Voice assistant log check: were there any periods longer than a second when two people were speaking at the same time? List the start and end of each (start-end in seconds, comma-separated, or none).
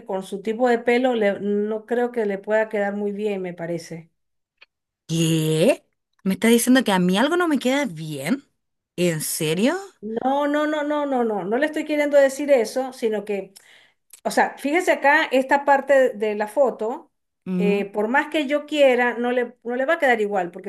none